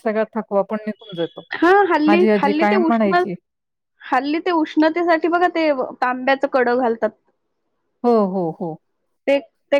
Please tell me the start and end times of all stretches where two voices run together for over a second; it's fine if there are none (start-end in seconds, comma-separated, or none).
none